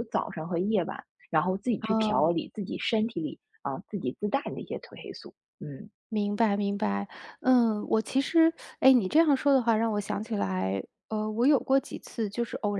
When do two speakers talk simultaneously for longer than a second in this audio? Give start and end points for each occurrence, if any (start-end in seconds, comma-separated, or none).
none